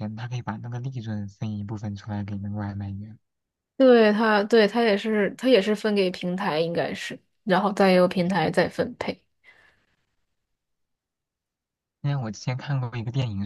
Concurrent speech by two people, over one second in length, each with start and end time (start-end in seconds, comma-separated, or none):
none